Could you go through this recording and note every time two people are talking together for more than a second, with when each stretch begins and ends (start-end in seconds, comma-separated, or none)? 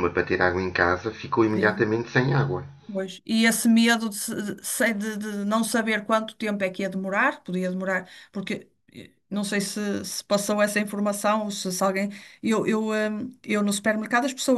none